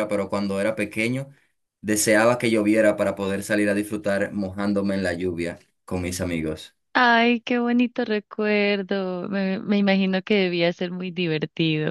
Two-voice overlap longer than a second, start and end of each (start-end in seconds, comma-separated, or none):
none